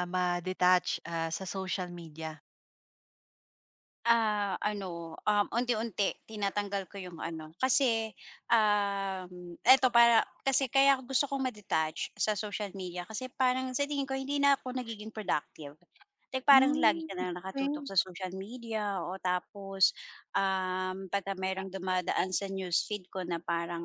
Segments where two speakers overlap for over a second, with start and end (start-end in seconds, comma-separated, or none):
16.5-17.9